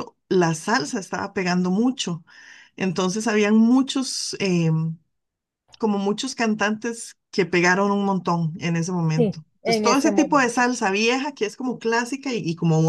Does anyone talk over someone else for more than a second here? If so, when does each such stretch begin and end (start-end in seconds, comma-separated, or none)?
9.2-10.7